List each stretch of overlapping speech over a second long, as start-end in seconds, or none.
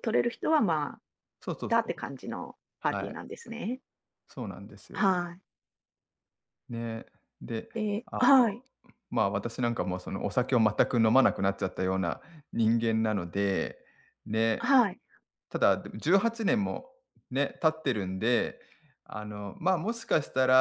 none